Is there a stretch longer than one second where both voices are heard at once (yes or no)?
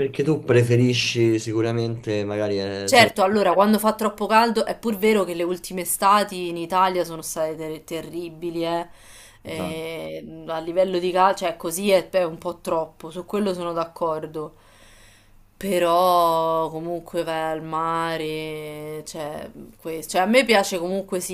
no